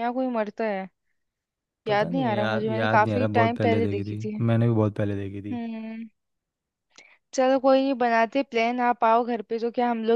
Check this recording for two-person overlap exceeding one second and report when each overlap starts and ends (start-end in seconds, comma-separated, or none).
1.9-4.4